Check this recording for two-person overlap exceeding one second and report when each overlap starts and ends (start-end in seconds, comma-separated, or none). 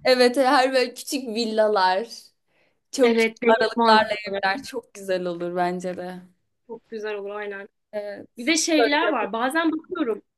3.0-4.4